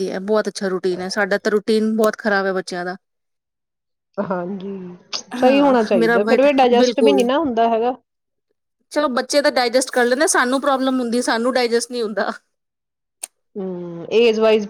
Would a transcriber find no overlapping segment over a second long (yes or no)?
no